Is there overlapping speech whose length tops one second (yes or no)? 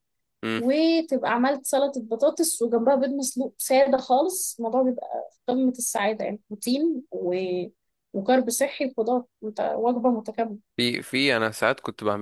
no